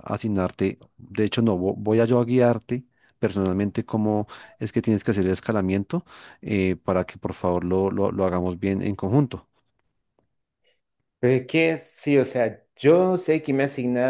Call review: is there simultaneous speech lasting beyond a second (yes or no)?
no